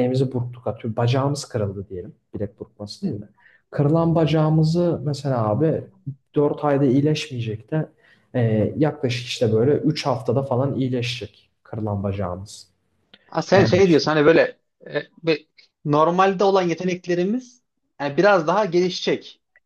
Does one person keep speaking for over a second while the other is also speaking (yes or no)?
no